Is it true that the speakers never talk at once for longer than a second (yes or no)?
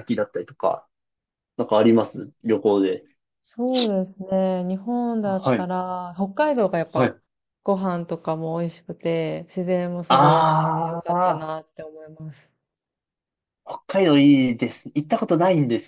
no